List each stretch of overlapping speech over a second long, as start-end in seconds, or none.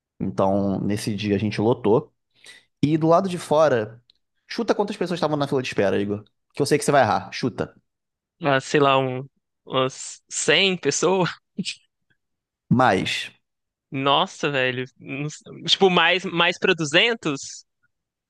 none